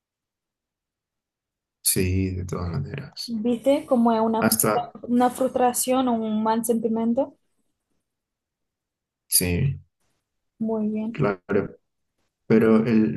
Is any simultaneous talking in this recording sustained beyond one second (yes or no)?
no